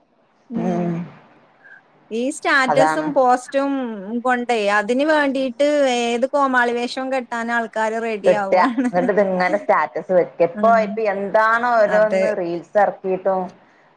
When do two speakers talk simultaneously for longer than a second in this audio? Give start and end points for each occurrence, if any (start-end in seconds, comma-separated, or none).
none